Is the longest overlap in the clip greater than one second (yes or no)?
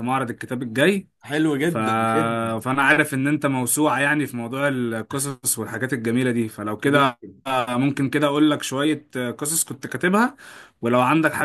no